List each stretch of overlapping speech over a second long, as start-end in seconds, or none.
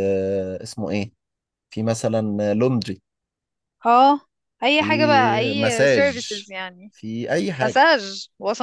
4.8-6.3